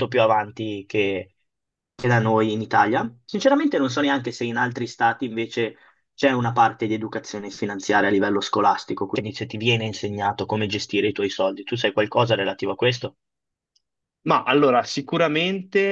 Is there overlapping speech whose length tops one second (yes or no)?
no